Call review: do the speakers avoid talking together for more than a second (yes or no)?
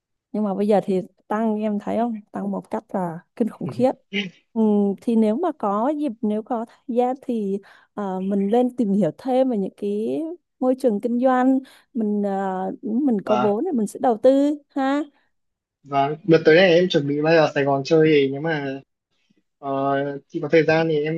yes